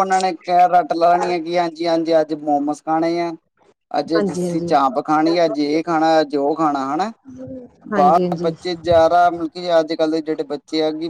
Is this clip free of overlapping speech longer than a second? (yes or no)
no